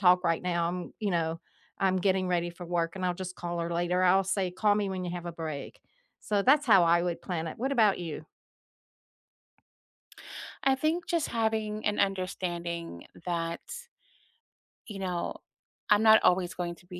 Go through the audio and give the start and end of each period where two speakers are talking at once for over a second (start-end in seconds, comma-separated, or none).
none